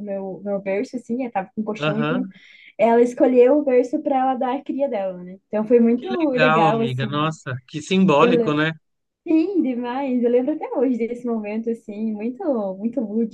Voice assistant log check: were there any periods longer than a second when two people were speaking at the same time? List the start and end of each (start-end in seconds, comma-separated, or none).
6.0-7.4